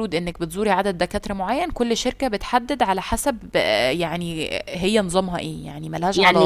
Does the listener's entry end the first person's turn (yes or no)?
yes